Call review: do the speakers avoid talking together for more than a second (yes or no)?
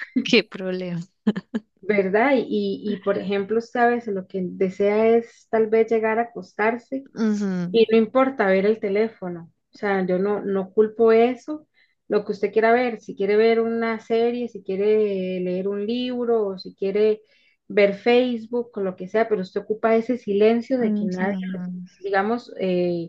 yes